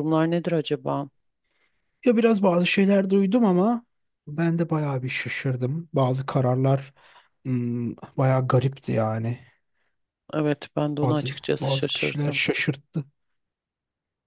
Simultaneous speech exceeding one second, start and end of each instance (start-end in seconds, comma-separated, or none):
11.0-12.4